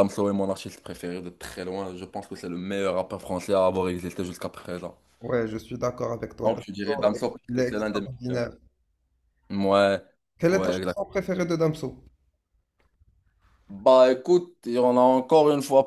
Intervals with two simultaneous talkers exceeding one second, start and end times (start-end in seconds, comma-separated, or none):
6.5-8.4